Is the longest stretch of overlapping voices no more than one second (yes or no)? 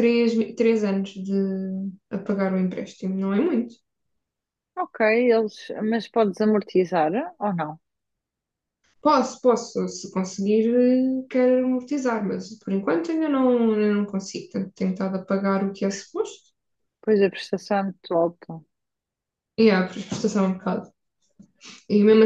yes